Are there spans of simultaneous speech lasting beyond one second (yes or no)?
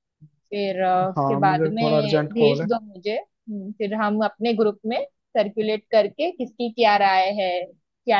yes